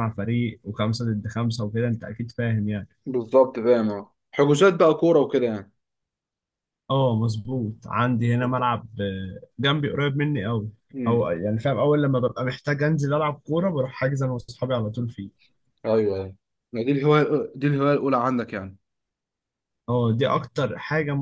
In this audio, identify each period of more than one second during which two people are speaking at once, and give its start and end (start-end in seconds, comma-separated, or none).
none